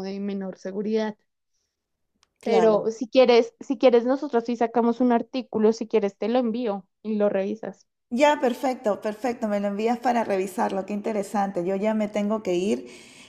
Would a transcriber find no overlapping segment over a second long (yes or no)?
yes